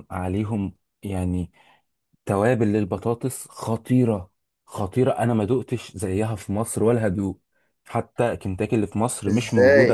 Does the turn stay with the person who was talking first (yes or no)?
no